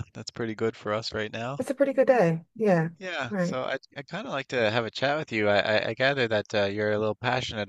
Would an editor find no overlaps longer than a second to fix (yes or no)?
yes